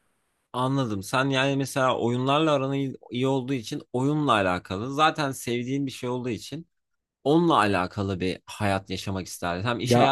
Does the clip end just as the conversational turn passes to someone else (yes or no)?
no